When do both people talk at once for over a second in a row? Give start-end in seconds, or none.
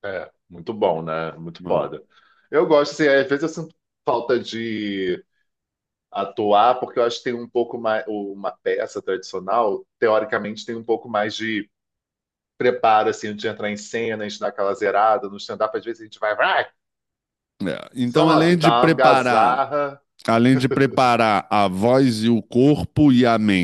18.1-19.6